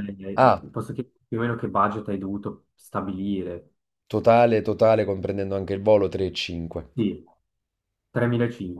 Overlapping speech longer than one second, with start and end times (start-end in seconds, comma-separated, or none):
none